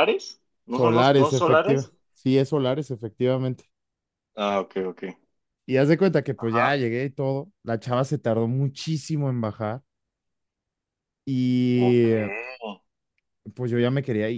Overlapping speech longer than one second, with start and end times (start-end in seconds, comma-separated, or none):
0.7-1.9